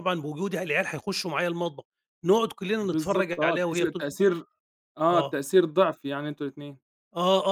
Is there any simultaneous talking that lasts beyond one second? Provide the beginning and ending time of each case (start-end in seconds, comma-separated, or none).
2.8-4.2